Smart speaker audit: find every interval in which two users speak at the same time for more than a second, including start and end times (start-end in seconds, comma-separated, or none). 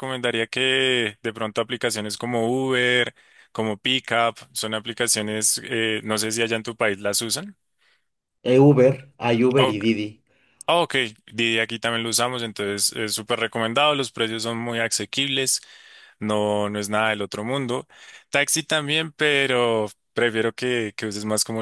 none